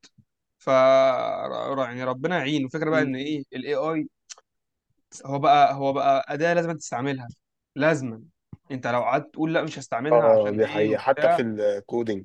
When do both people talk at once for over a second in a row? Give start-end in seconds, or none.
10.1-11.4